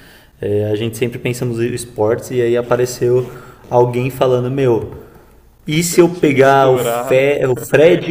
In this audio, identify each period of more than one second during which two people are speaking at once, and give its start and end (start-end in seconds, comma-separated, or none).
5.8-7.3